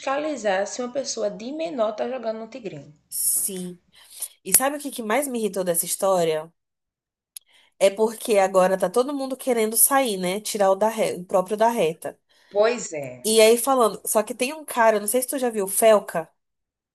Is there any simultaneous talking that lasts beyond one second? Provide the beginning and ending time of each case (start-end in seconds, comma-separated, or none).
none